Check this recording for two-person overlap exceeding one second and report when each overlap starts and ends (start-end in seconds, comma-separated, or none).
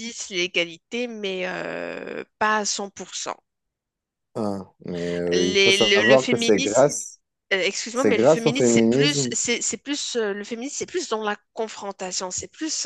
5.3-6.9, 7.9-9.3